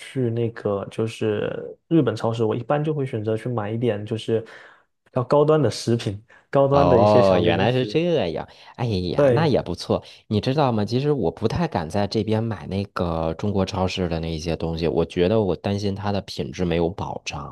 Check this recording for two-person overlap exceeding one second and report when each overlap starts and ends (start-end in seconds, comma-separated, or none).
6.7-8.0